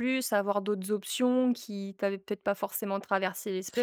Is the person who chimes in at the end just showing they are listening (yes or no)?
no